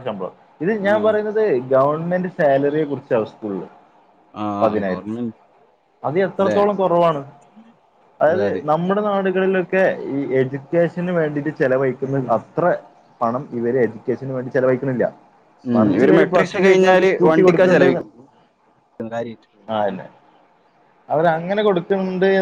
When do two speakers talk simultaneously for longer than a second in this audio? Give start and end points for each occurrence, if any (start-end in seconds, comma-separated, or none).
15.8-17.9